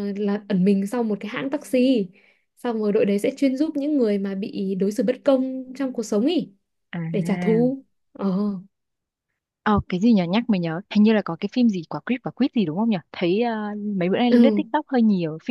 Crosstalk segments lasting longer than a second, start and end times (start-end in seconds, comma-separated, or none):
none